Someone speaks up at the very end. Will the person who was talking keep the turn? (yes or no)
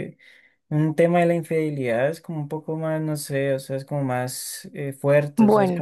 yes